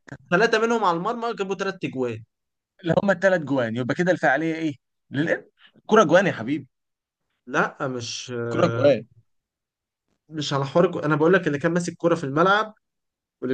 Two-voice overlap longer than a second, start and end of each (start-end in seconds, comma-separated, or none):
none